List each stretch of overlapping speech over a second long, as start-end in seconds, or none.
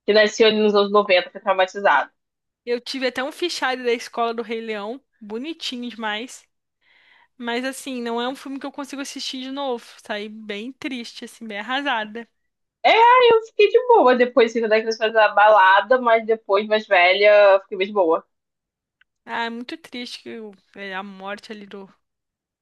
none